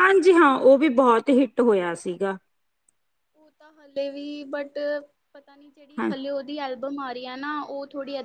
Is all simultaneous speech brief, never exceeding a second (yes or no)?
yes